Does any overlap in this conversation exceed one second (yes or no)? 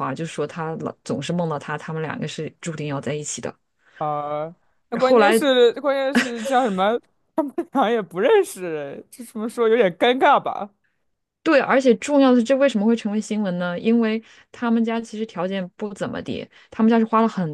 no